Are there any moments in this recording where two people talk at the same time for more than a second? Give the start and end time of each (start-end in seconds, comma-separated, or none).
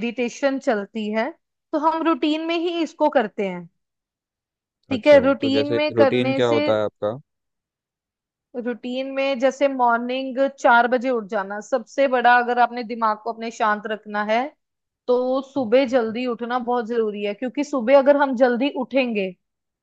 5.0-6.6